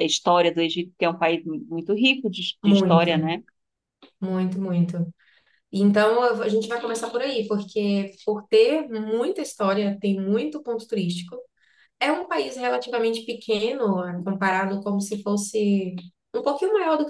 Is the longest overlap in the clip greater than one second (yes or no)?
no